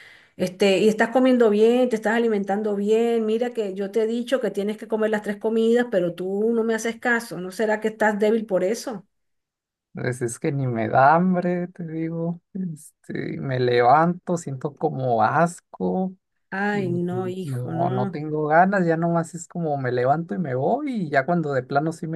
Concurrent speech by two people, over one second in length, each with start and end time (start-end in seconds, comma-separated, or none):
16.7-18.2